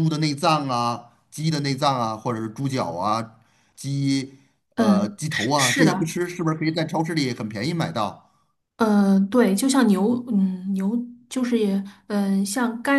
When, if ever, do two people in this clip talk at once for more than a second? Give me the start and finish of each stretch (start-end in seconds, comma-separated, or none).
4.8-6.1